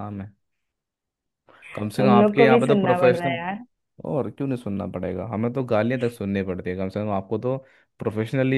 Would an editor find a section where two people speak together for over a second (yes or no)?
yes